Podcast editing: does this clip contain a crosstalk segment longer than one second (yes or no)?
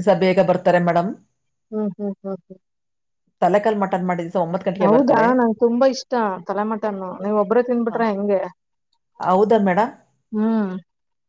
no